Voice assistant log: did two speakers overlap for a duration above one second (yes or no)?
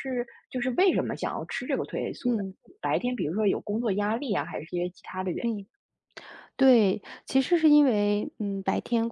no